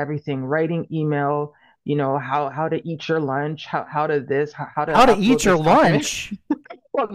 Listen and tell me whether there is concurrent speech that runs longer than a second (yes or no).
yes